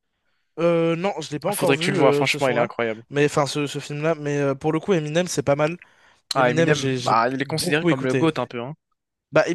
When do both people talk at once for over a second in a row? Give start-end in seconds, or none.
1.5-2.7, 6.4-8.3